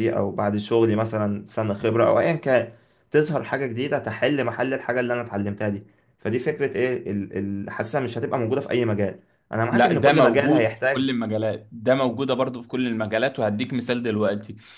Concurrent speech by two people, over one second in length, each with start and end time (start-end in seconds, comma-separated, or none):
9.7-11.1